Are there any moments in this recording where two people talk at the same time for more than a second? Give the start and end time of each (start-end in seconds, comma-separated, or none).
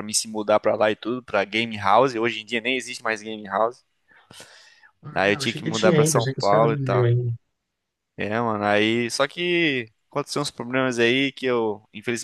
5.1-7.1